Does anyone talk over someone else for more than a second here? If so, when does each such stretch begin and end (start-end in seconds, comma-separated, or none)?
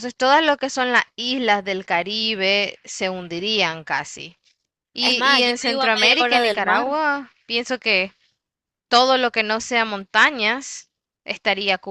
5.0-7.0